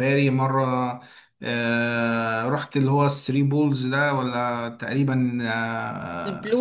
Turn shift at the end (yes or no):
no